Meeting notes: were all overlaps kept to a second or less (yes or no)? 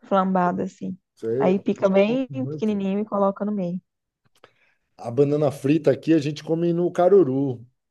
no